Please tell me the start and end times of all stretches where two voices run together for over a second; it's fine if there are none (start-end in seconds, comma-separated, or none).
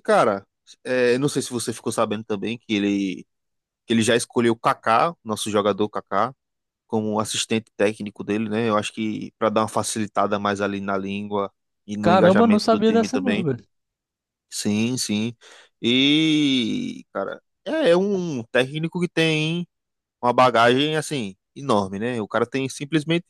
12.0-13.5